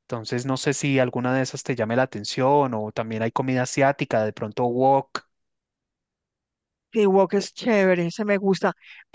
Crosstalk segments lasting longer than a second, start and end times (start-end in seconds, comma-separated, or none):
none